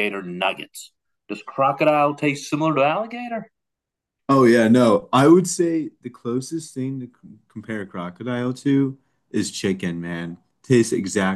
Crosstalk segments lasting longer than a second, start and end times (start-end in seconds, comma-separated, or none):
none